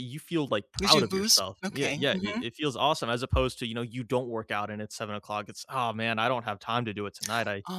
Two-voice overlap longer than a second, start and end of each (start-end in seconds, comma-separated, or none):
0.8-2.4